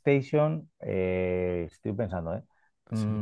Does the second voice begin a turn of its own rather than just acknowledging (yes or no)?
no